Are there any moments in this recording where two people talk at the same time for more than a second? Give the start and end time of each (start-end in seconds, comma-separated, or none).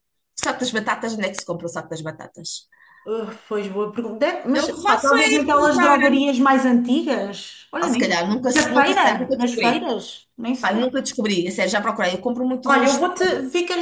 4.5-6.0, 7.8-9.8